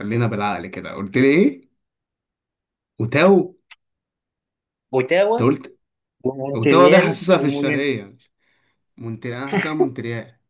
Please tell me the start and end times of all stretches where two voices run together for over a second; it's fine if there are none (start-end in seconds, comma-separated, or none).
6.5-8.0